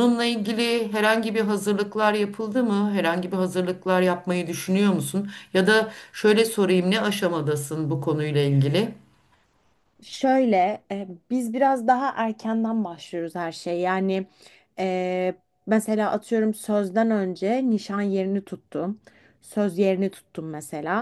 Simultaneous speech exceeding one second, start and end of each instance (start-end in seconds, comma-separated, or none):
none